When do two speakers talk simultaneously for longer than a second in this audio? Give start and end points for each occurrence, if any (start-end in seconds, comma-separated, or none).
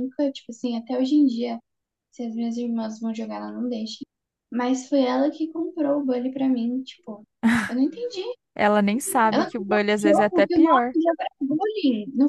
9.3-10.9